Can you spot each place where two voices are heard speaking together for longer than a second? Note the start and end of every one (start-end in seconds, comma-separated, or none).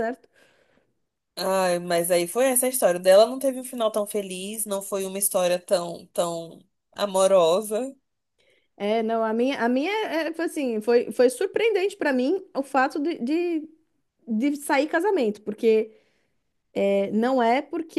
none